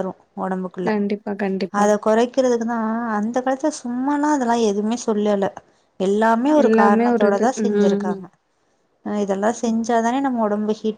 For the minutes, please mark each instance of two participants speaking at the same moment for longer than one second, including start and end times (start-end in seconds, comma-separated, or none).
6.7-8.2